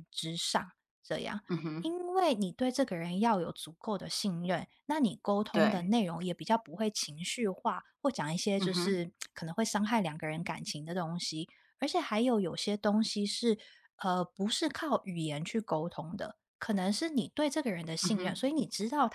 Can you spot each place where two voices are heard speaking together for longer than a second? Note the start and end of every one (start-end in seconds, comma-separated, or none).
none